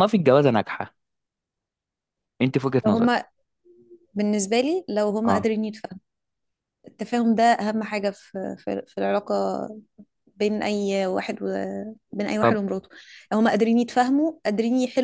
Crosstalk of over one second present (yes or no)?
no